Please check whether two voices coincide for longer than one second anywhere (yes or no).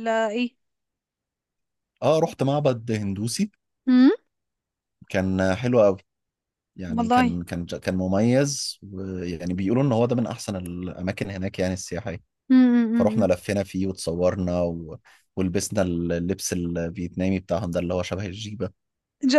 no